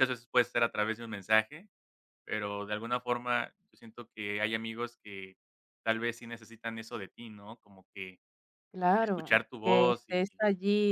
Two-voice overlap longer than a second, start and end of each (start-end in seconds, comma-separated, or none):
9.0-10.3